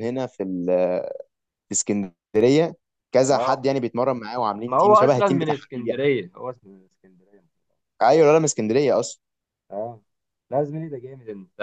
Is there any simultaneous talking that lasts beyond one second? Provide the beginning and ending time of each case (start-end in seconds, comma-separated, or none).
4.7-6.0